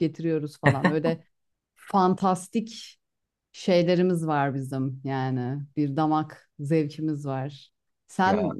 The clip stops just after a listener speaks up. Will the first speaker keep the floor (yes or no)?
yes